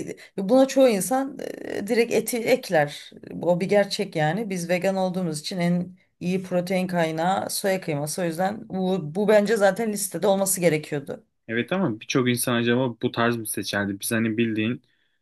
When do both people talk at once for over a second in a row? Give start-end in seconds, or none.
none